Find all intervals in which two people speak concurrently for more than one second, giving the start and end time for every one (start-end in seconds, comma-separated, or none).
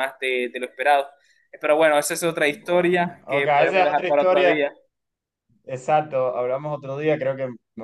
2.5-4.6